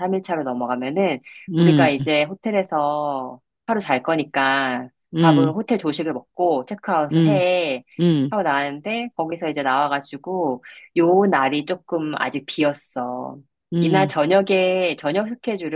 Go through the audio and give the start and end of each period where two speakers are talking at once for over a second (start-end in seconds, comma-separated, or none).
none